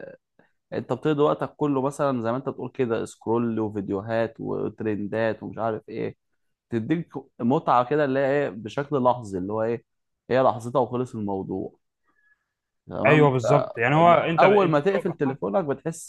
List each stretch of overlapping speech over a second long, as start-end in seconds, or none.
13.1-15.4